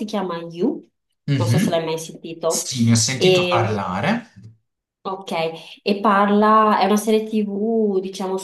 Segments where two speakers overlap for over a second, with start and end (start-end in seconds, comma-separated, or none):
none